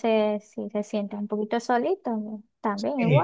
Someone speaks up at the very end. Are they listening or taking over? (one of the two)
taking over